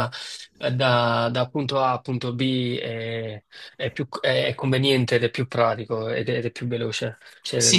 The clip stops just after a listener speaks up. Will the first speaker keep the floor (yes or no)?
no